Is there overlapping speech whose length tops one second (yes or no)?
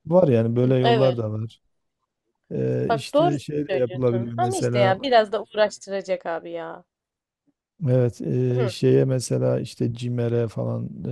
yes